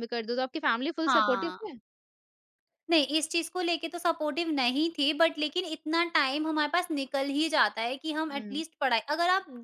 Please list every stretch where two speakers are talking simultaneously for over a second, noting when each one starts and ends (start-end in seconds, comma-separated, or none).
none